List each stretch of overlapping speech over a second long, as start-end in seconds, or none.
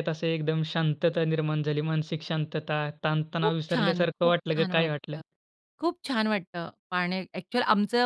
3.4-5.2